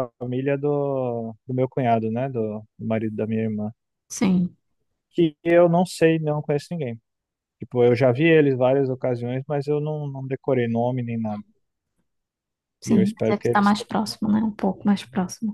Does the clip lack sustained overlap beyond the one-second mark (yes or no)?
no